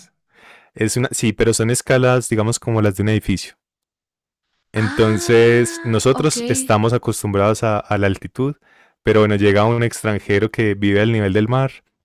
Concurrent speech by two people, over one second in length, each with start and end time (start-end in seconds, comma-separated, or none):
4.8-6.3